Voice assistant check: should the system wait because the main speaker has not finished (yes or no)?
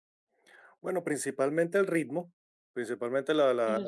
yes